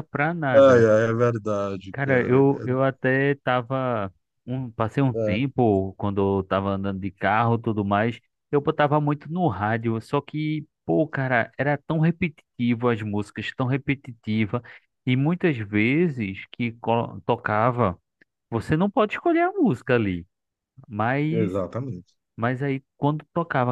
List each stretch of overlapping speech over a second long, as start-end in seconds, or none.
none